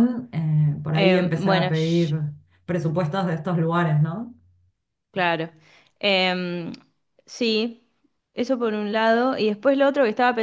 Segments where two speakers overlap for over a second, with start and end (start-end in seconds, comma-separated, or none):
0.9-2.1